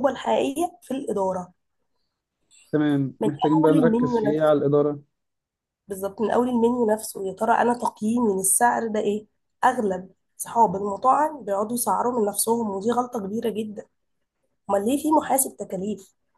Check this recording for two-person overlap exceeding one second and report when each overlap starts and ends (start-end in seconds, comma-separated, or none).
3.2-4.5